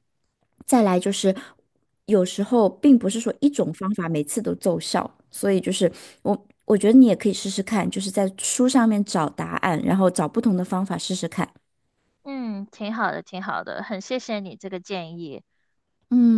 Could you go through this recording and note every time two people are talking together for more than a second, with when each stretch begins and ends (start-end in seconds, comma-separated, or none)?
none